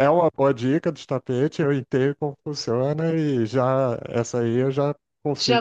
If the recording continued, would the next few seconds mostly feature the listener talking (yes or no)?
yes